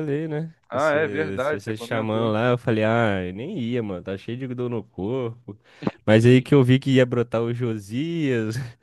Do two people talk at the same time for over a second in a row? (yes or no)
yes